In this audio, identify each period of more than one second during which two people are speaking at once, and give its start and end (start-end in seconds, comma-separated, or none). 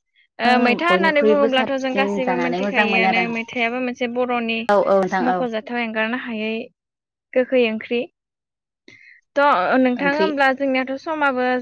1.6-3.2